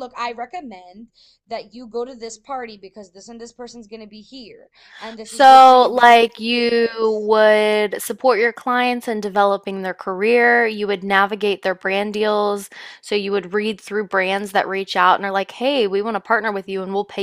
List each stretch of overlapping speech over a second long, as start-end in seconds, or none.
5.2-7.3